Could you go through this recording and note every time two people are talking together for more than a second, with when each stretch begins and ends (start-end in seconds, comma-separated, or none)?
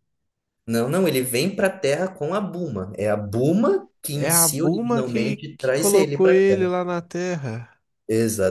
4.1-6.4